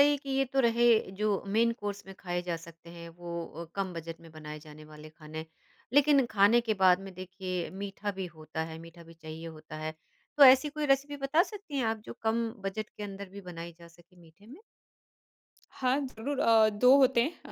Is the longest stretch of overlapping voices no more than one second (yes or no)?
yes